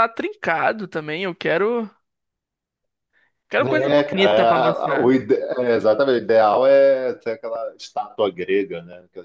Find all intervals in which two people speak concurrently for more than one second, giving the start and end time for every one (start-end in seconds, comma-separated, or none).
3.6-5.2